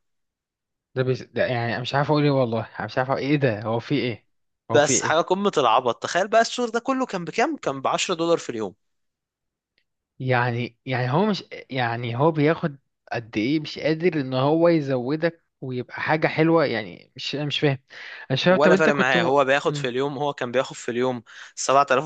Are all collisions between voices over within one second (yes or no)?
no